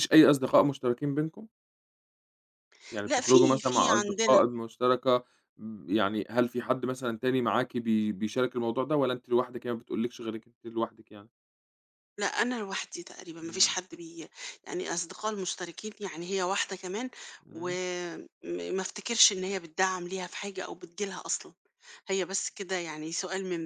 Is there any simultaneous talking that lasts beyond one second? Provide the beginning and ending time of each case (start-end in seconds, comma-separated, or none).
3.1-4.4